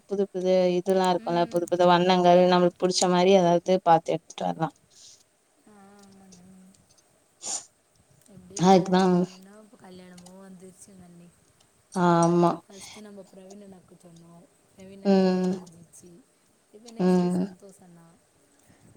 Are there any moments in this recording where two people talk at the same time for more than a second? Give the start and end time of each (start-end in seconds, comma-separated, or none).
none